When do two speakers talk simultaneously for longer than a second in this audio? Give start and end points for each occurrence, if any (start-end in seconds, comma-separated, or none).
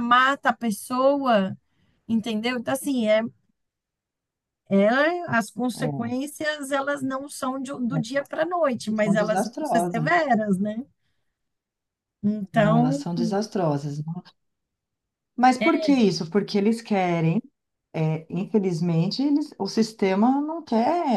8.9-10.3